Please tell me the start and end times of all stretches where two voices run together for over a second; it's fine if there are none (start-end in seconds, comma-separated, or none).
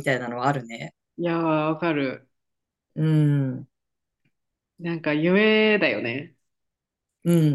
none